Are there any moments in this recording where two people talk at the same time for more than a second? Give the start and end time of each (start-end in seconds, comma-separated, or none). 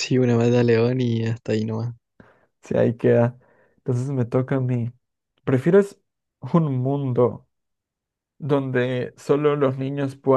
none